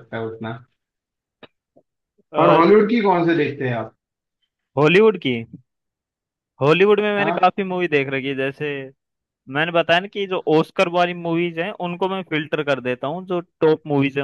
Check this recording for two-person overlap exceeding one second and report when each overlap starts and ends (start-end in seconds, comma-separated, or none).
none